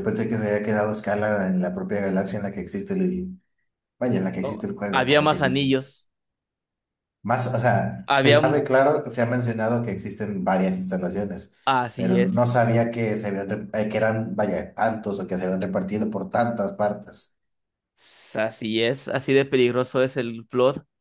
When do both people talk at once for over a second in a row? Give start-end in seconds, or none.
4.0-5.8